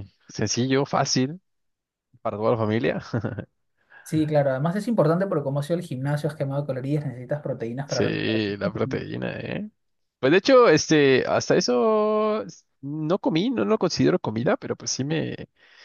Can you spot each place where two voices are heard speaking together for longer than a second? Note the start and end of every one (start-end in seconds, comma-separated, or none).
7.8-9.2